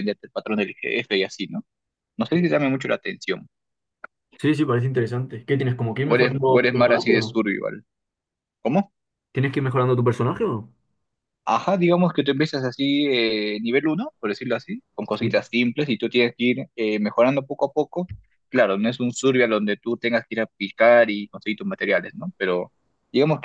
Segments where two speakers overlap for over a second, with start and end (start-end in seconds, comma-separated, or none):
6.0-7.4